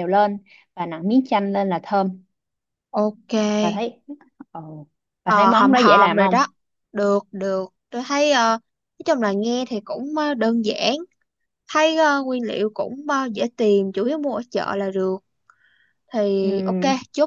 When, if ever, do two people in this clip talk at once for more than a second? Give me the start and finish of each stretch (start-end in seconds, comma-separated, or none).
5.2-6.5